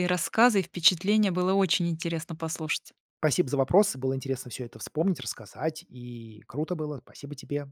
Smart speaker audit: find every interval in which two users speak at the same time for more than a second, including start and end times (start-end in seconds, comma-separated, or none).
none